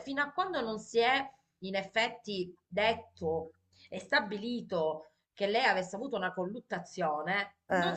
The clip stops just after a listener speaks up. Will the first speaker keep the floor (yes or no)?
yes